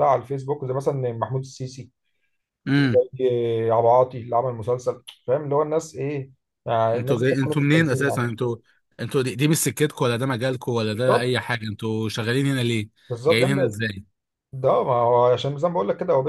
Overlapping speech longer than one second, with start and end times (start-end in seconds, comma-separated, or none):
6.9-8.3